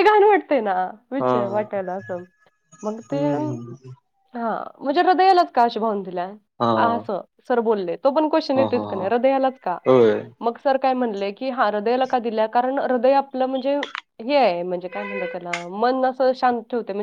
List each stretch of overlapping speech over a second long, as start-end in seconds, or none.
none